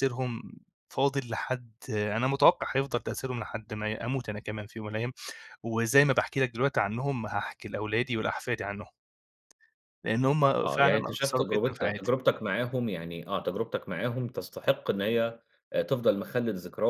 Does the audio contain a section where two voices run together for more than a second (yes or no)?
yes